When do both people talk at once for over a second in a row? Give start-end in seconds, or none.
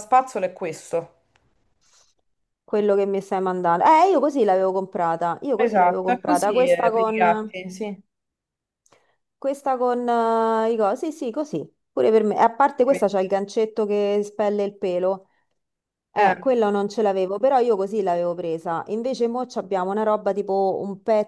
5.6-7.5